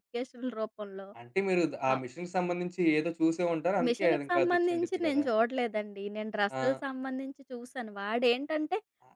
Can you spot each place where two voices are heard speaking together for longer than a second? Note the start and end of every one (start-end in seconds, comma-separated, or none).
3.9-5.2